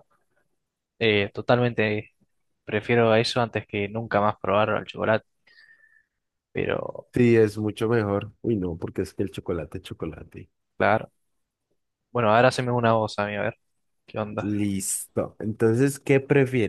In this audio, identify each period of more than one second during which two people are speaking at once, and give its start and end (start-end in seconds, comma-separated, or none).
none